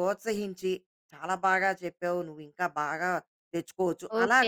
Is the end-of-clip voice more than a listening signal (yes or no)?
yes